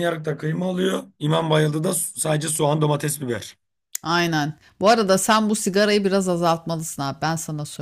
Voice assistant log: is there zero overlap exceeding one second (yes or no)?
yes